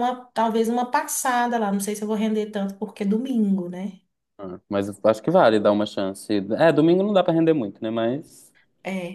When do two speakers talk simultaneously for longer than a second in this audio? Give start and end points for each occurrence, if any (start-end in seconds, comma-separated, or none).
none